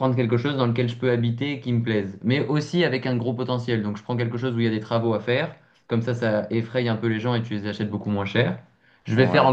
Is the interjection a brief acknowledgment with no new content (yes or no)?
yes